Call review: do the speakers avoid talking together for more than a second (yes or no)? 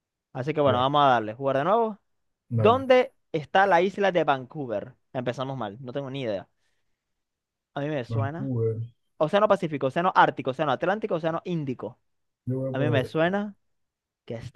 yes